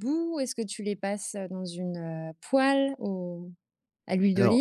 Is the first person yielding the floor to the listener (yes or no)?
yes